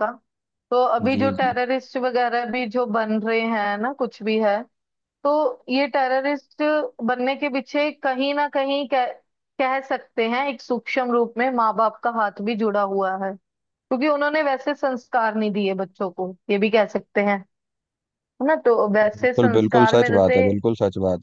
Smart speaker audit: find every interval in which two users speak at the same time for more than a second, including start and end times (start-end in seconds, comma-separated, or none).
19.1-20.4